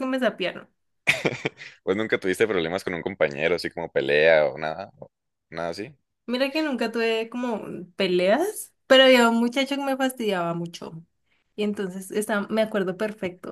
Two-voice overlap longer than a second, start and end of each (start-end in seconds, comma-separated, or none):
none